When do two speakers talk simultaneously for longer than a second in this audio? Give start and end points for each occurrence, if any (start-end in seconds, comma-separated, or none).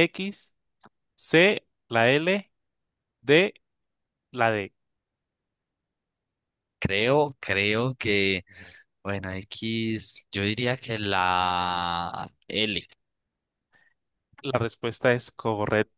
none